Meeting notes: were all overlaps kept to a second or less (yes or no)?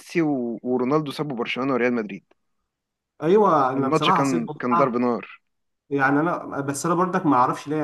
no